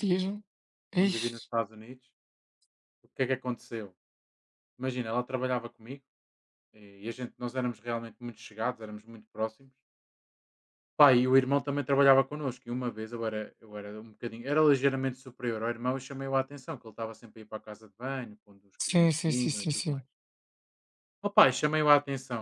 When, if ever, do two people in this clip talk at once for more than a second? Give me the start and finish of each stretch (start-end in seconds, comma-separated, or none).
18.8-20.0